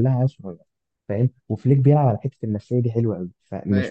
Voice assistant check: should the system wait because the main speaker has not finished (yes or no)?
yes